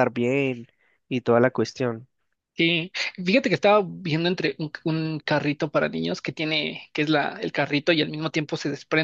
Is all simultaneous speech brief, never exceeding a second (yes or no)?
yes